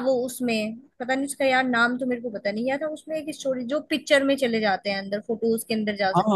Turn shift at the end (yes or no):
yes